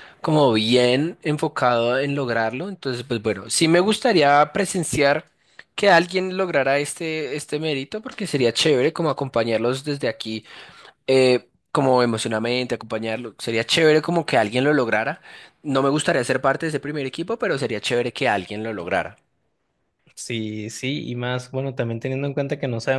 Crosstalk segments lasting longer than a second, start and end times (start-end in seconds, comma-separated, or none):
none